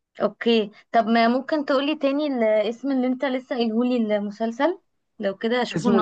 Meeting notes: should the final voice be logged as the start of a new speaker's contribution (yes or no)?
yes